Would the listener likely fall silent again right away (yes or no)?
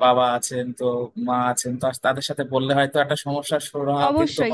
no